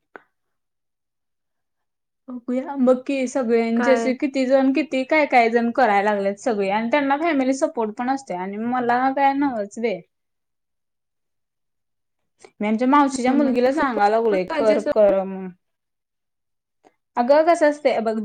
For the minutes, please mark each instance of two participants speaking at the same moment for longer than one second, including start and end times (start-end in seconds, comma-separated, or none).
13.3-14.9